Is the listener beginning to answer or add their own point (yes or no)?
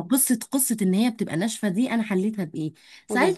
no